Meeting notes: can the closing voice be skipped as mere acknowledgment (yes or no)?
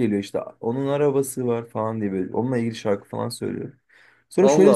yes